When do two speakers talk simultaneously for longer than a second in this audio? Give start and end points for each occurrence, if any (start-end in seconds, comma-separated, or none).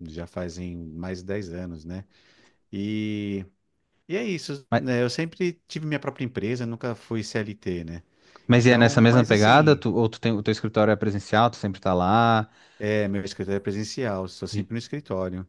8.6-9.8